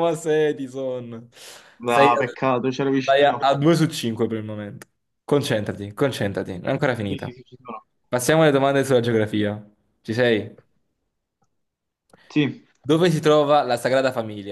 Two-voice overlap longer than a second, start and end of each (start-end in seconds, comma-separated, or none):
1.8-3.5